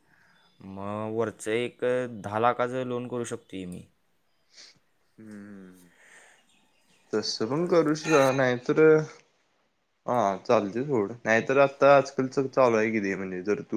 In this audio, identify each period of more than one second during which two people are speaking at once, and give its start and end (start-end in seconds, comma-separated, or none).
none